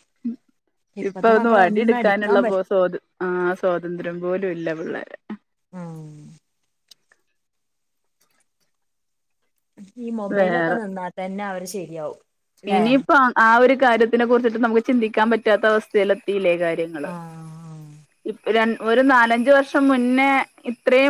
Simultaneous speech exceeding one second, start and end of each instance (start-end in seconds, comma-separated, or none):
1.1-2.6